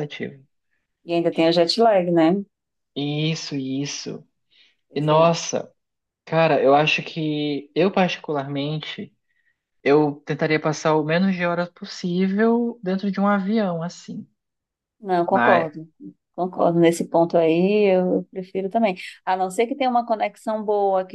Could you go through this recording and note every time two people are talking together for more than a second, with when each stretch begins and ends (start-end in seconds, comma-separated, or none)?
none